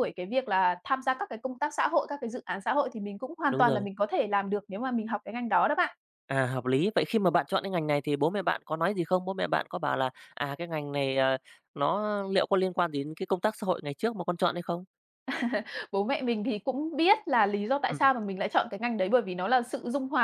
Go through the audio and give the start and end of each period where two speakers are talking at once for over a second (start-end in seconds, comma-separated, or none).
none